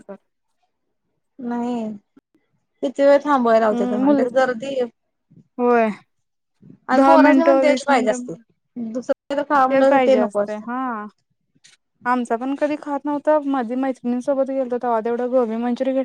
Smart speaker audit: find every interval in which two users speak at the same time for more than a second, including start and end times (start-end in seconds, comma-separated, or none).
7.0-8.2